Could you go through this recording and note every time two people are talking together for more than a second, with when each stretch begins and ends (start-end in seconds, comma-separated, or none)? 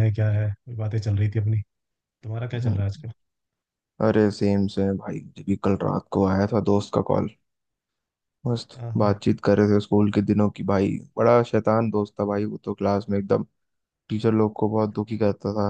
none